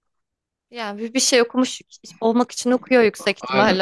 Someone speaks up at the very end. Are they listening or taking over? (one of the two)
taking over